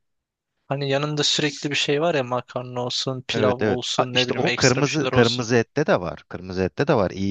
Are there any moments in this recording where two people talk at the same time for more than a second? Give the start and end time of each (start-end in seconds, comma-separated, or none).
3.3-5.5